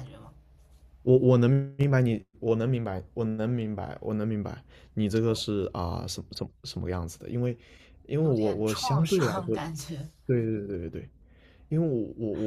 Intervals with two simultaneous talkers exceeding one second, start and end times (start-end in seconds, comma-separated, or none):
8.2-9.6